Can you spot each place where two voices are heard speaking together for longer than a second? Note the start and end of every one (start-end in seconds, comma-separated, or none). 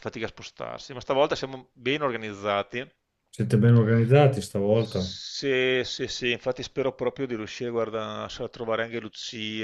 none